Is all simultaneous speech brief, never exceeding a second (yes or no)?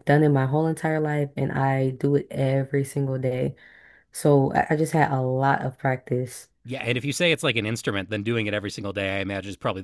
yes